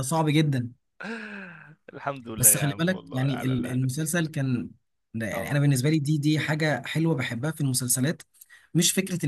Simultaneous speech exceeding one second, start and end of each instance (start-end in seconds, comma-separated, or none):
2.4-4.1